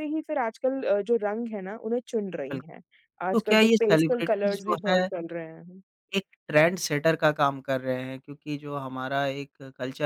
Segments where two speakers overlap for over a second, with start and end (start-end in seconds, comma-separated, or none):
3.3-5.1